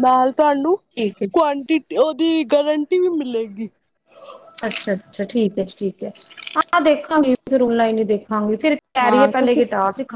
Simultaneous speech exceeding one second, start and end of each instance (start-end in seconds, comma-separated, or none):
none